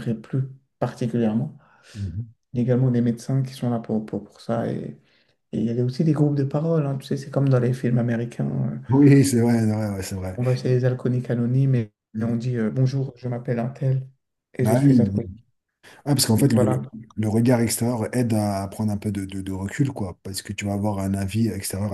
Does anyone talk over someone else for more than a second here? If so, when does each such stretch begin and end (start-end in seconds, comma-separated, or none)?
none